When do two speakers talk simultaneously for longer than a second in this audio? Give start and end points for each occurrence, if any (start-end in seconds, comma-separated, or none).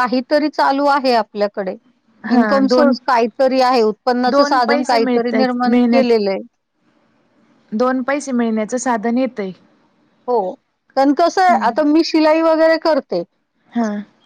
4.3-6.3